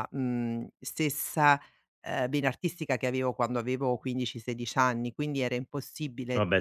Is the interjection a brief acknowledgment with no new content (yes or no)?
yes